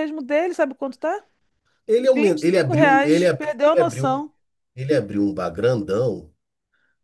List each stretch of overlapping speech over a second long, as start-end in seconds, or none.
2.1-4.2